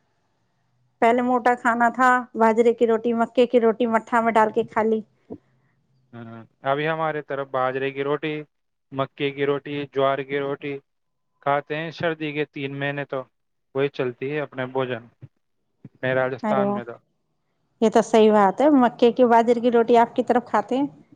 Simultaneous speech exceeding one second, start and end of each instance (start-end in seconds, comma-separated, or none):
none